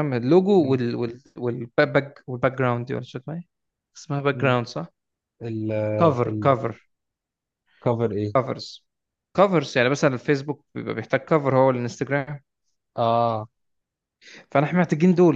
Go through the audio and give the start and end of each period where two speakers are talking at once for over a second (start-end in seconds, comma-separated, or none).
none